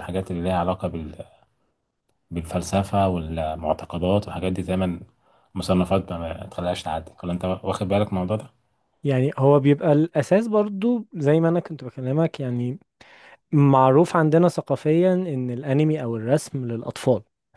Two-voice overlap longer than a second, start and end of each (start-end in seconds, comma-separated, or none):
none